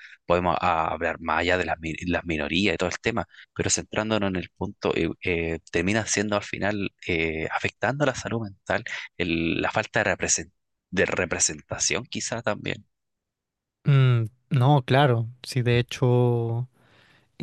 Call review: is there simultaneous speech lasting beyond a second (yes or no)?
no